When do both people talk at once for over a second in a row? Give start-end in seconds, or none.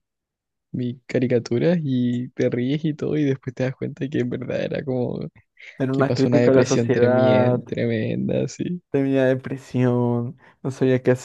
5.9-7.6